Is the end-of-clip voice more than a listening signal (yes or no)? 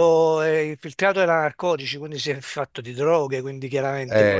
no